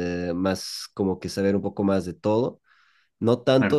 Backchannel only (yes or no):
yes